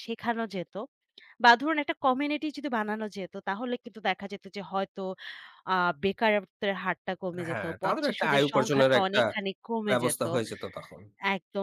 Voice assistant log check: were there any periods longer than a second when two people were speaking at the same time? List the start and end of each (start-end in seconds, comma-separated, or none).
7.5-9.2